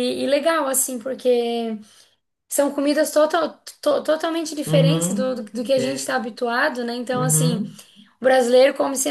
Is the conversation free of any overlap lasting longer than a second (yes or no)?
no